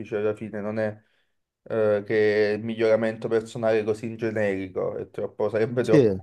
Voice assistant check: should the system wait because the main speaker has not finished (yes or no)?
yes